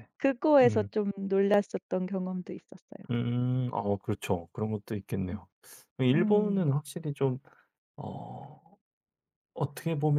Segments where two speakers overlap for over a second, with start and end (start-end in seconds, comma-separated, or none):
none